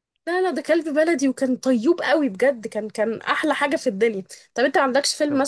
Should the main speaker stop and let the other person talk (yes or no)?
no